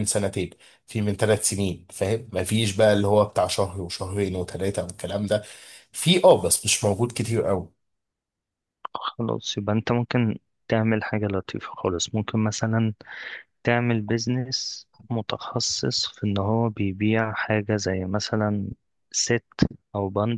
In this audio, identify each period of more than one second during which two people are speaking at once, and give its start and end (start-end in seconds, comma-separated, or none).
none